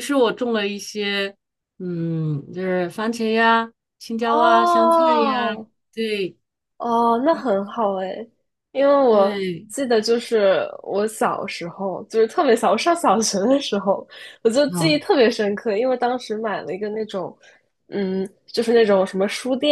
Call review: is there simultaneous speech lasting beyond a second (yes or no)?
yes